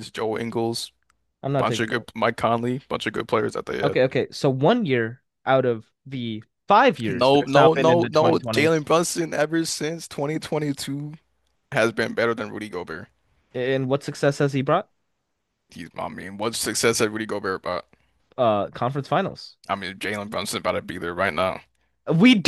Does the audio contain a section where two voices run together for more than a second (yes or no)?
yes